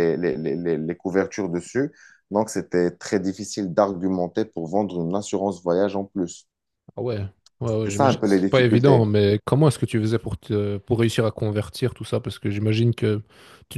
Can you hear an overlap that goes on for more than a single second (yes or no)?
yes